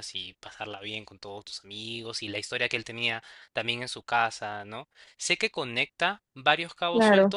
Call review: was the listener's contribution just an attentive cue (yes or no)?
yes